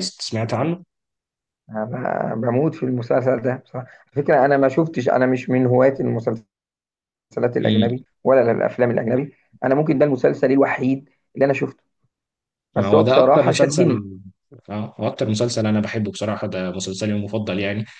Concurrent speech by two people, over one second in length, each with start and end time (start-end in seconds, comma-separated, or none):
12.8-14.0